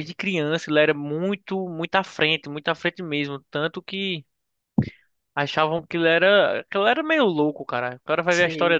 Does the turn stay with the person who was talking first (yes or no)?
yes